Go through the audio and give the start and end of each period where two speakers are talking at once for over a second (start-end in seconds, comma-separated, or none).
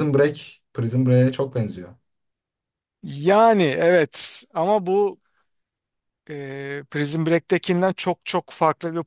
none